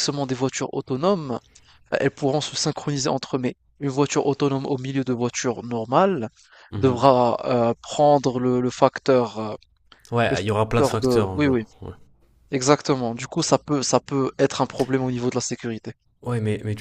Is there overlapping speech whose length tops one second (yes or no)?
yes